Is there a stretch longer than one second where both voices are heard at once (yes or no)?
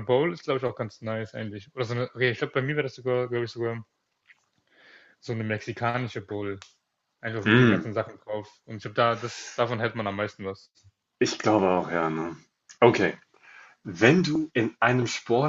no